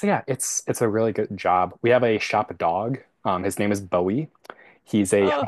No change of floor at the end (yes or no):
yes